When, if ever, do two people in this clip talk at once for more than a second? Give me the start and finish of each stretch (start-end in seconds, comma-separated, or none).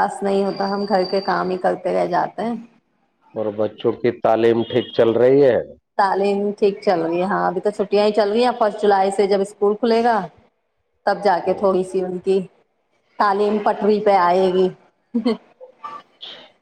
none